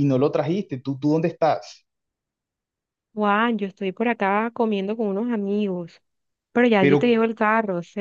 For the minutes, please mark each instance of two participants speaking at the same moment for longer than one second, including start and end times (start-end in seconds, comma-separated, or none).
none